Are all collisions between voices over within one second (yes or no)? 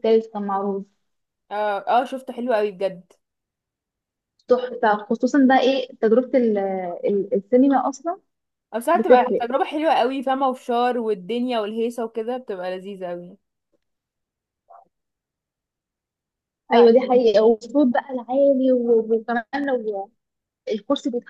yes